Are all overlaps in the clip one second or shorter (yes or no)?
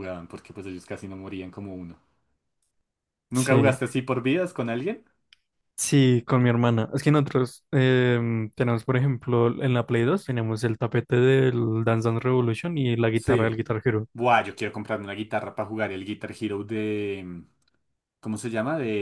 yes